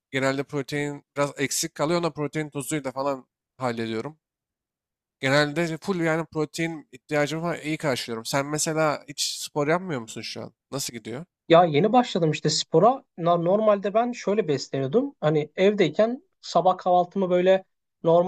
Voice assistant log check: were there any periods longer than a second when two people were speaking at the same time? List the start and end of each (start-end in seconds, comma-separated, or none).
none